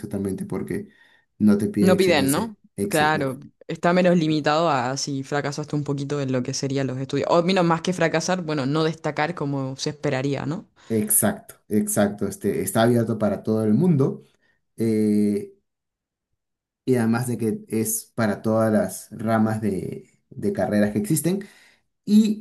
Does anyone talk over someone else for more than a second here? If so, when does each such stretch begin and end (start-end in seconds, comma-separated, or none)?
1.8-3.2